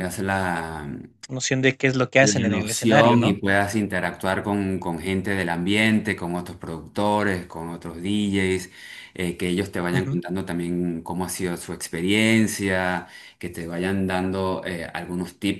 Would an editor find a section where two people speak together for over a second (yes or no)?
yes